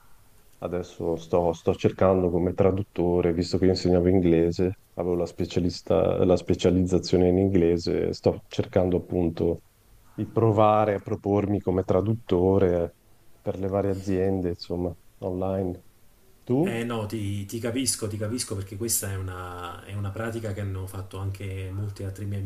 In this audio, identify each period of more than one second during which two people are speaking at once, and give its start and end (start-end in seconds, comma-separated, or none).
none